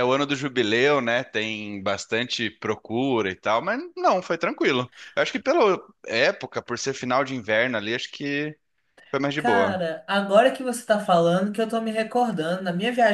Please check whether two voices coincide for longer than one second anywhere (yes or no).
no